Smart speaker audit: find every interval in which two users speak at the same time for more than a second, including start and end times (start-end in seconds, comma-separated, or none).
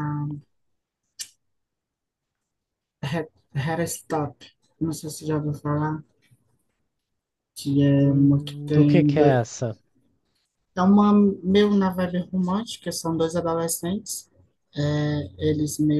8.0-9.4